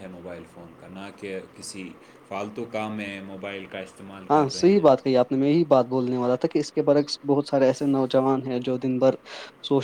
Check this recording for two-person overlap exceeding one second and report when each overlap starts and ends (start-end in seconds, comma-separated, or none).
none